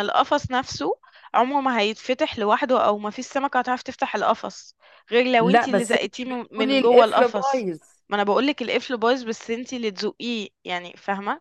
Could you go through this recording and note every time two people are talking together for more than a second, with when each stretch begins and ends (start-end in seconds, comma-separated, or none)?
5.4-7.7